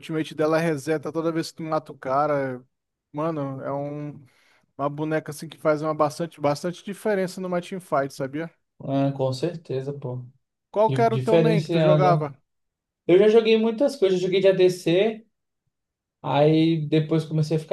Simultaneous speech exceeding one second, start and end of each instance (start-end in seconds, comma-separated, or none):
10.9-12.2